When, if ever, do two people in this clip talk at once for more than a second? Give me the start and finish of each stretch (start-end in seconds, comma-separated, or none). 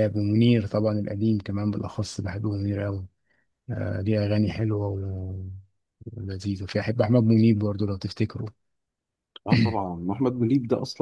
none